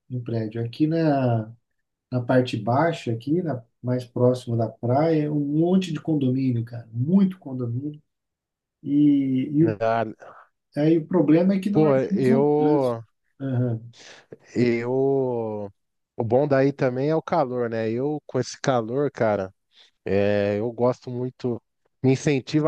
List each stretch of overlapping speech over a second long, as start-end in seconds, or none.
11.7-13.0